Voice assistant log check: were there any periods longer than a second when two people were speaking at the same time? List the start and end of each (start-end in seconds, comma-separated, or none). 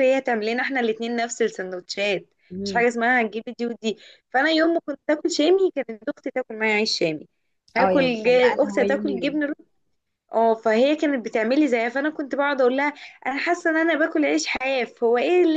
7.8-9.4